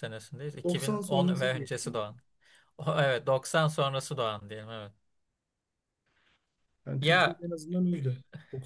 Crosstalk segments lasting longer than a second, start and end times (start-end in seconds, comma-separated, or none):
0.6-2.0